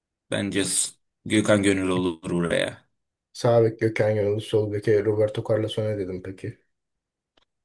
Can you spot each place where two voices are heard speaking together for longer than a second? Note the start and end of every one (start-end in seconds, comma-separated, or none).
none